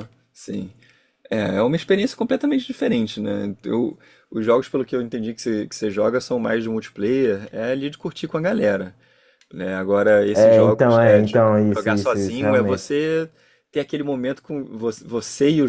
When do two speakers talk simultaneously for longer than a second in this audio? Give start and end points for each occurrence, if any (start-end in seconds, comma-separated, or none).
10.3-12.8